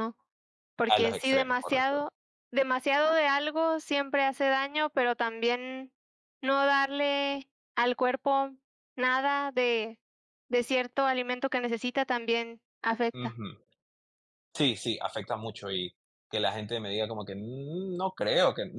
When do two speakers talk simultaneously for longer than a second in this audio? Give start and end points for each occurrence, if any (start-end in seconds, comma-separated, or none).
0.9-2.1